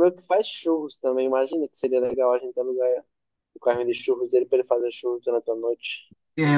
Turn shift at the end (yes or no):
yes